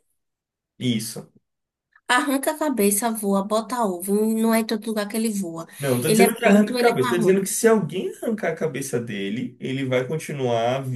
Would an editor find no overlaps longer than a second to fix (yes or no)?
no